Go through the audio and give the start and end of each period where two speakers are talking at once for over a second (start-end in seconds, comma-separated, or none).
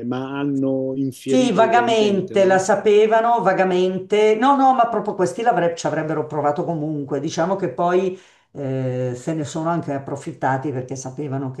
1.3-2.6